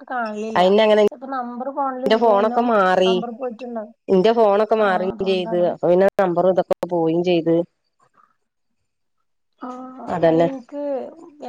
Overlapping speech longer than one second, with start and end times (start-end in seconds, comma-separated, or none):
none